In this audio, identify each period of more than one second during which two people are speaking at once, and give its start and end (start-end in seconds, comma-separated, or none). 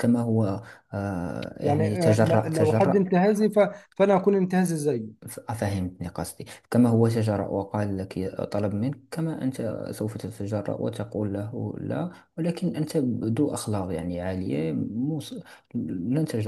1.6-3.0